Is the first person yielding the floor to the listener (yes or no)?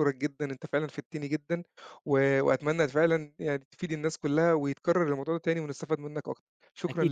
yes